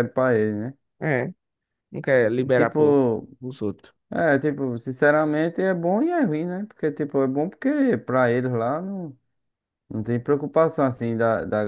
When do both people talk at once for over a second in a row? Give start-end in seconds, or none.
none